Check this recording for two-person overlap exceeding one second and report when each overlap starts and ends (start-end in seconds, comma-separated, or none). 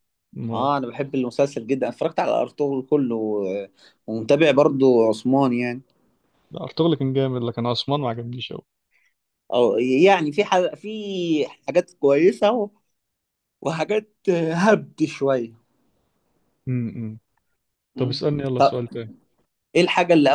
none